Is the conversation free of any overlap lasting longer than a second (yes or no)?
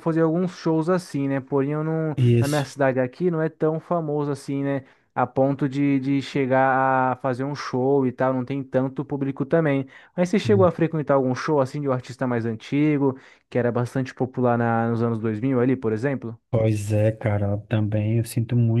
yes